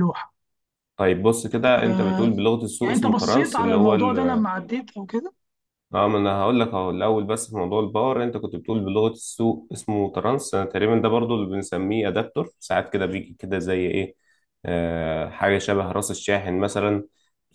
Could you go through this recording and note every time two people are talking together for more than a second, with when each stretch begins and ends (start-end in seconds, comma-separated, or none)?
2.8-4.4